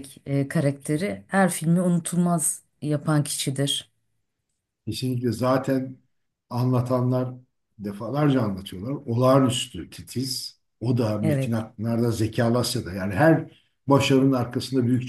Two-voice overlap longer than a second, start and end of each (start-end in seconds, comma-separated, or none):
none